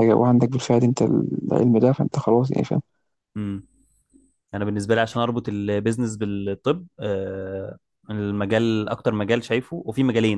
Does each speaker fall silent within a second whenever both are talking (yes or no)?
yes